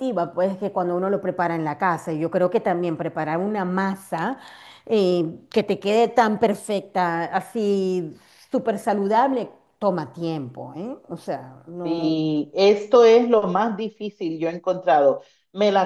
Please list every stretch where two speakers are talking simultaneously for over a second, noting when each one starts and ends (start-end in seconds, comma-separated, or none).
none